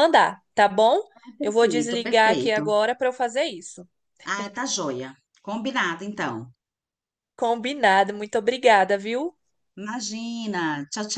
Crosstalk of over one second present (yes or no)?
yes